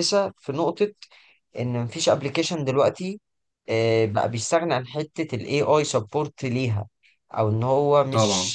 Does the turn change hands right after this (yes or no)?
no